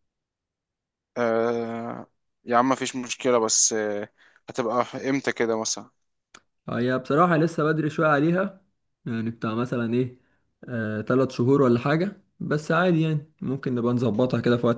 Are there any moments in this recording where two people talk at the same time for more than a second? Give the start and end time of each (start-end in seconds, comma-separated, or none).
none